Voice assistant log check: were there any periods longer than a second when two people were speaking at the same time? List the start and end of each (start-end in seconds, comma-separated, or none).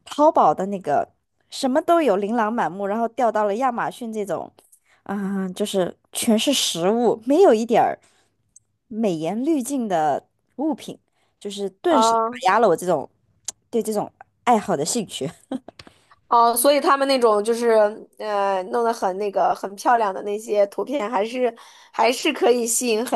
none